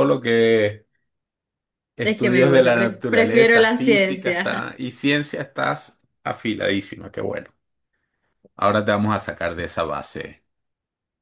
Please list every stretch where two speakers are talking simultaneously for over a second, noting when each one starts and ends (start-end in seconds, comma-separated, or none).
2.0-4.7